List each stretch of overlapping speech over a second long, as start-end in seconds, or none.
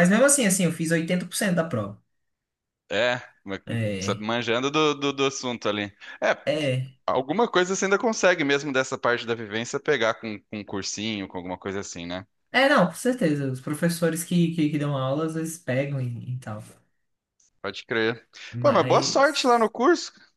18.5-19.7